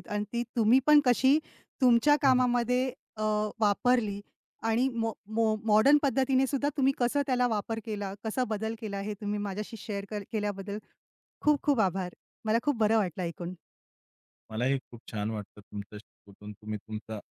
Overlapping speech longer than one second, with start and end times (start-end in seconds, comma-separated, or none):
none